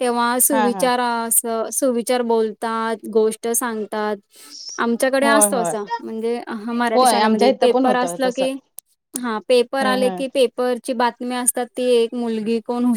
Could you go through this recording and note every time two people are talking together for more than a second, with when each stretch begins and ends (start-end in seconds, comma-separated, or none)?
6.9-8.5